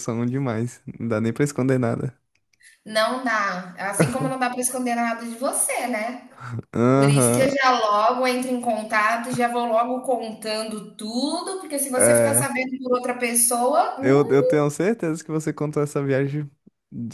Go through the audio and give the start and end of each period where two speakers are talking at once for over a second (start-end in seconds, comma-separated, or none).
none